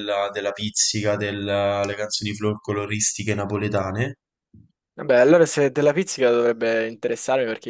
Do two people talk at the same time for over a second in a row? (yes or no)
no